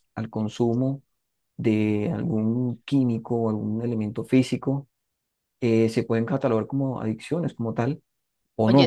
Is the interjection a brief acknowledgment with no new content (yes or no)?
no